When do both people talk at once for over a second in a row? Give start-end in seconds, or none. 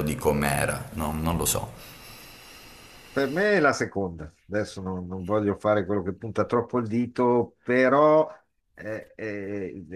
none